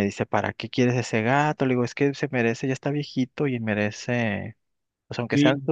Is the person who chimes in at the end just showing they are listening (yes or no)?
yes